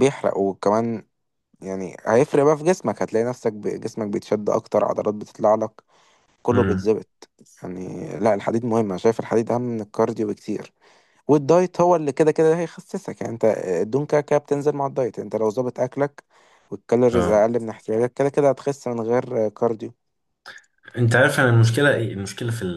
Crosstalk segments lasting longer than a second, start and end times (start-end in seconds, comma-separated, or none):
none